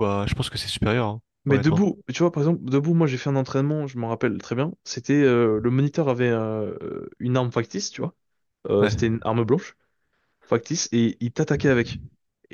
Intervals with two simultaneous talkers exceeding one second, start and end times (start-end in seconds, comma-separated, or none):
none